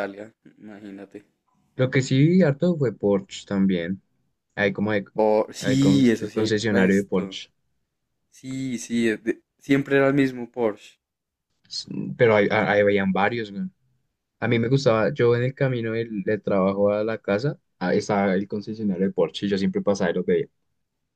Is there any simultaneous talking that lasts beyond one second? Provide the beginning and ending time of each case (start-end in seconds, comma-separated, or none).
5.6-7.4